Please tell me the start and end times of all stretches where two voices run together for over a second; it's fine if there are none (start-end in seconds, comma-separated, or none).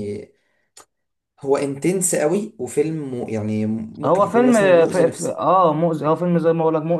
4.0-5.4